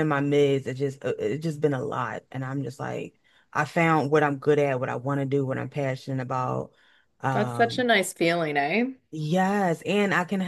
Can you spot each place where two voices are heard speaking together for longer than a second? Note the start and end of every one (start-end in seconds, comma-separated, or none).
none